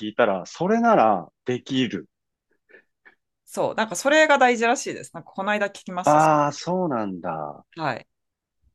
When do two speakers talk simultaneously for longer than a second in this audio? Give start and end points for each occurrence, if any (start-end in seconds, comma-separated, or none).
none